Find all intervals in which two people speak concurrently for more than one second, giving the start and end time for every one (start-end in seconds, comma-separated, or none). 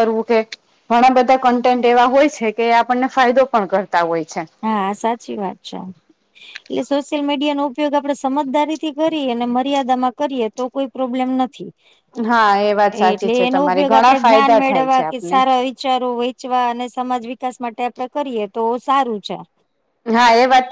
13.1-15.4